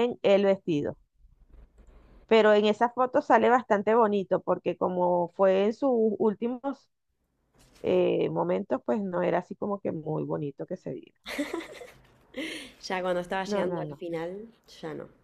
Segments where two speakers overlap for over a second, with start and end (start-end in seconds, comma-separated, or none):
none